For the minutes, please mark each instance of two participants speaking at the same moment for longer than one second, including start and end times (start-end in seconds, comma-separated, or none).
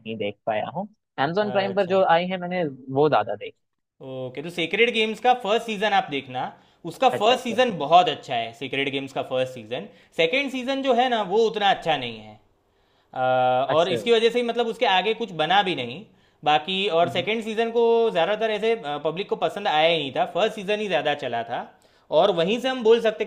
none